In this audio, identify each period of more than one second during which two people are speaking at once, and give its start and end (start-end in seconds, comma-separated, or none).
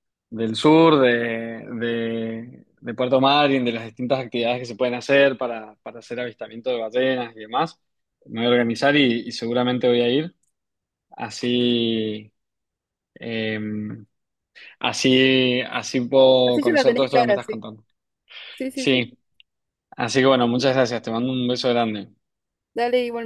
16.4-17.6